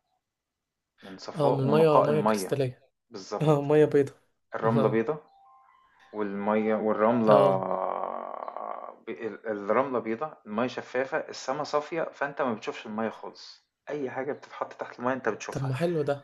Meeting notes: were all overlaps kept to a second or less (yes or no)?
no